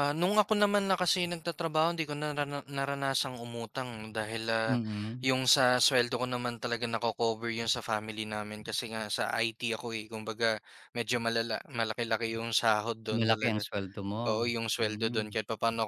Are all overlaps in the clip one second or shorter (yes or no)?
yes